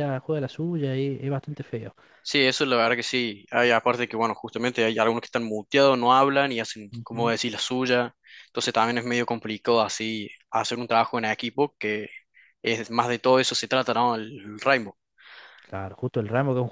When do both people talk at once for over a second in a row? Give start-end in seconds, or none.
none